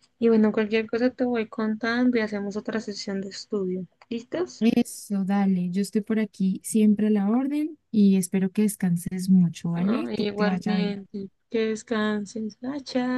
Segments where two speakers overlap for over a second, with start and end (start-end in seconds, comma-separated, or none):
9.7-11.0